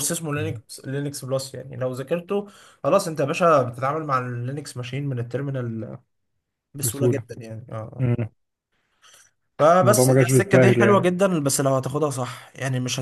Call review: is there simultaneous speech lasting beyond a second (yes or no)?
yes